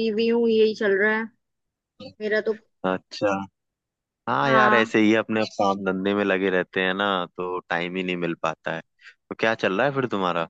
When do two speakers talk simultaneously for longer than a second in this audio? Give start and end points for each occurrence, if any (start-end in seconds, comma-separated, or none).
none